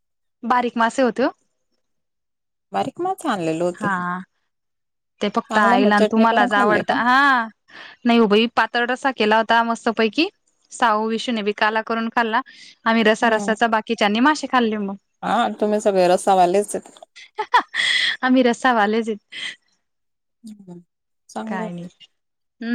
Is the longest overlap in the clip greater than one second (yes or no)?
yes